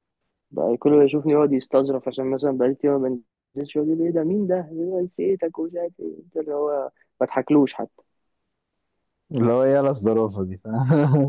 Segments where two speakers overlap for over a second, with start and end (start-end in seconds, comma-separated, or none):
none